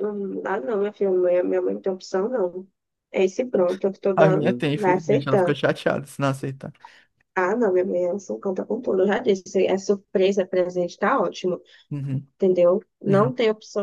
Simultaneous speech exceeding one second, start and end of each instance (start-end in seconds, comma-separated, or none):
4.1-5.6